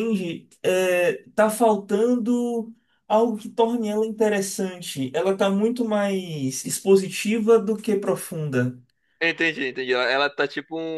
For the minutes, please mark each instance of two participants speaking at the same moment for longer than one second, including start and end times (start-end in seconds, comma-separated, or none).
none